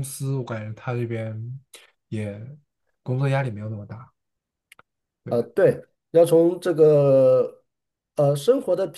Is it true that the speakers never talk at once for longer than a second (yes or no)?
yes